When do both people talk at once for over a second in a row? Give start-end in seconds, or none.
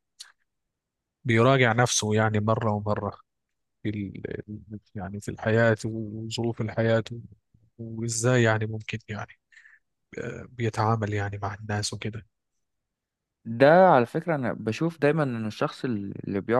none